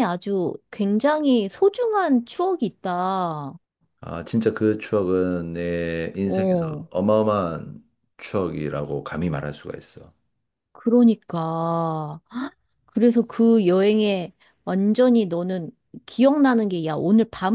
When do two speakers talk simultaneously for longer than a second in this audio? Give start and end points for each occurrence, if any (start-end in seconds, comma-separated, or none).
none